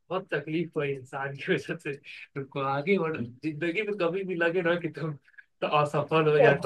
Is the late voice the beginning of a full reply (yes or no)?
no